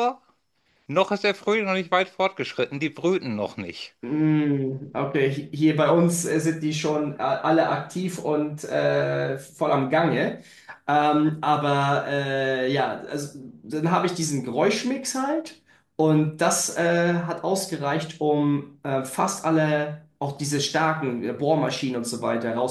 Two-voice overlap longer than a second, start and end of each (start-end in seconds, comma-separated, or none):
none